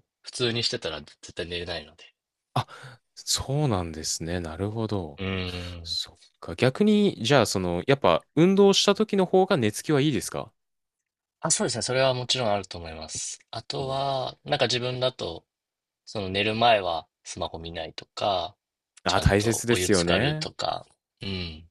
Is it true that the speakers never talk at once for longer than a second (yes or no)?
no